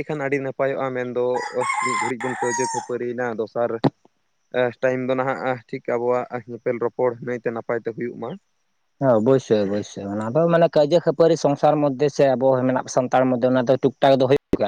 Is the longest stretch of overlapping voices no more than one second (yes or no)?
yes